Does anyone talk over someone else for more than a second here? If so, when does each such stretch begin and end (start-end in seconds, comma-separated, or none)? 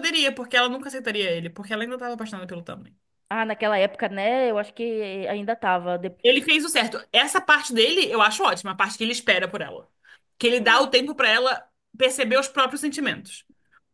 none